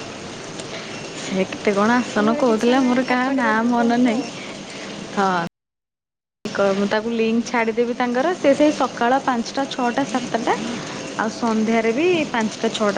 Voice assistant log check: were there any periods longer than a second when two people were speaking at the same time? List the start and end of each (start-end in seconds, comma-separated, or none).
2.2-4.2